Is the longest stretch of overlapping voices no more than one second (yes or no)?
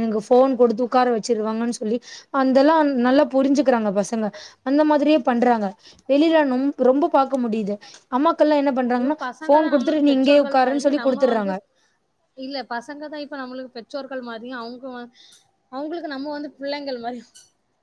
no